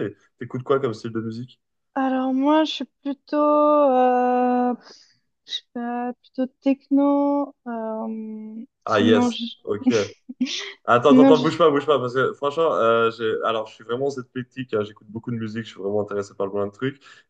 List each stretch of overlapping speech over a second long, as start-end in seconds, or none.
none